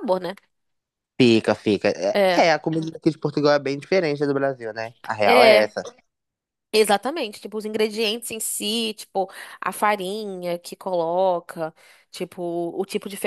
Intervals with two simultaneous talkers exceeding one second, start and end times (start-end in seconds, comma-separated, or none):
none